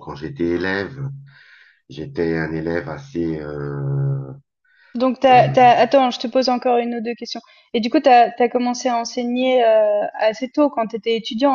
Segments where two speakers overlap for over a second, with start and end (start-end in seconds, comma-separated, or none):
none